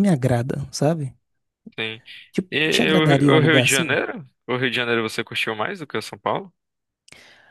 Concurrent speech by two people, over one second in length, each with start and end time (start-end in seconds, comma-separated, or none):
2.5-4.0